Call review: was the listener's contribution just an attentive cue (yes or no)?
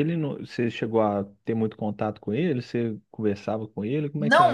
no